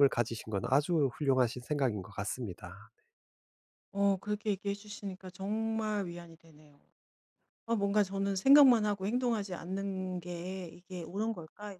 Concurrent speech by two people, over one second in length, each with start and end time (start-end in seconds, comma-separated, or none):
none